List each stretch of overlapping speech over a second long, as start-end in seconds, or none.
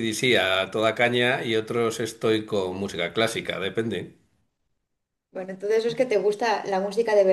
none